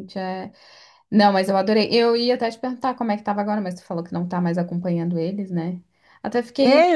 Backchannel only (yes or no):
no